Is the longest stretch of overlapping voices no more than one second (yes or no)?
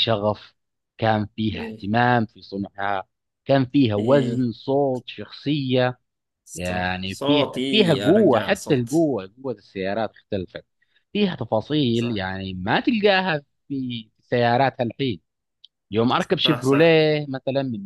no